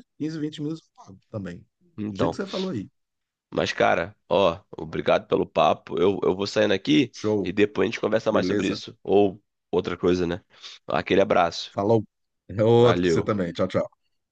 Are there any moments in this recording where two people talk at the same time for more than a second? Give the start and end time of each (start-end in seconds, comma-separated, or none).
none